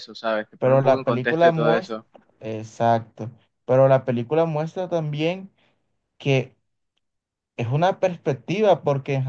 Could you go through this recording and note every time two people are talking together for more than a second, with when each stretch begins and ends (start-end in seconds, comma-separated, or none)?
0.6-2.0